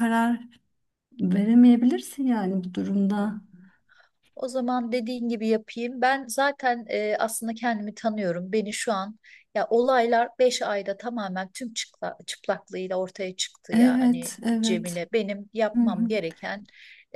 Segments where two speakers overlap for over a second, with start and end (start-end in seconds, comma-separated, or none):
13.7-15.0